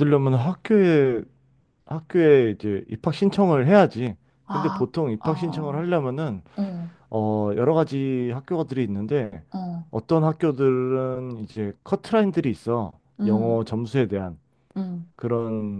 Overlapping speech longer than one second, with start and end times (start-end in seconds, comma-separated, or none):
4.5-5.9